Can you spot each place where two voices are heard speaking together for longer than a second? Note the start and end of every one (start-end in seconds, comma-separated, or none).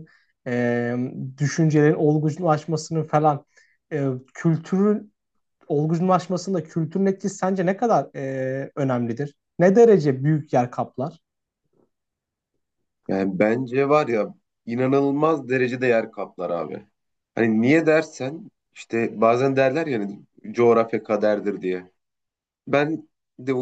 none